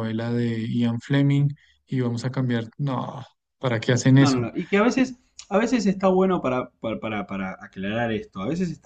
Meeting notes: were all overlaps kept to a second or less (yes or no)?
yes